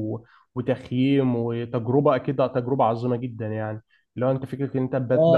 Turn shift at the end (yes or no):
yes